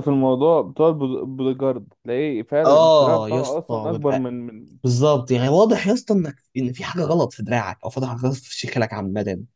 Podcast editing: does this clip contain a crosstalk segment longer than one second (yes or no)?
yes